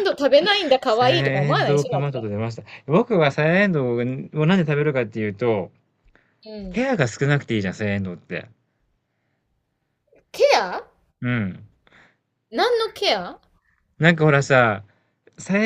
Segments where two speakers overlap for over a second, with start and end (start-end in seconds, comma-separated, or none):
0.8-2.3